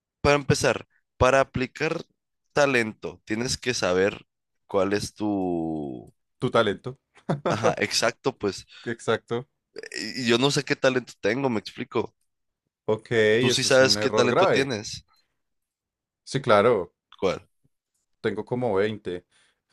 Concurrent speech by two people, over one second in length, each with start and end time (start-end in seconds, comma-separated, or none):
13.4-14.7